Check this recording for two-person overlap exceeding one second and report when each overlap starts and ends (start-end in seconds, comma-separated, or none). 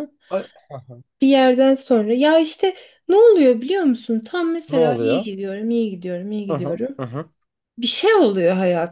none